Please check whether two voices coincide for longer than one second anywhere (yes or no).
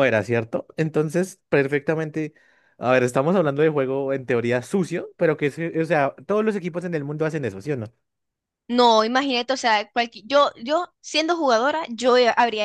no